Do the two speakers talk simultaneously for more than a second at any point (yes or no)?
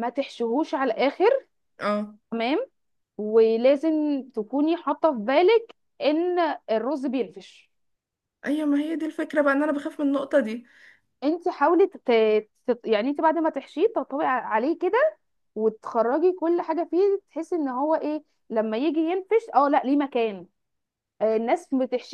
no